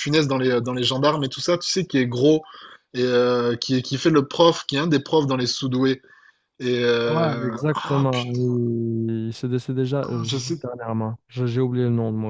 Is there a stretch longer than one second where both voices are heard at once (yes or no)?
yes